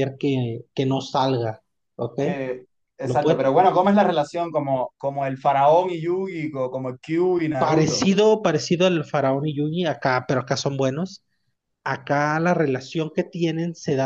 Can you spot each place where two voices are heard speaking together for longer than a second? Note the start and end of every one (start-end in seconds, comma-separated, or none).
none